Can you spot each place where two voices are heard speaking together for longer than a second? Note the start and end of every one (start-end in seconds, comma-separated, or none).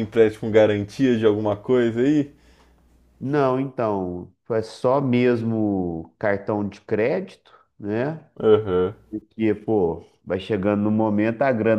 none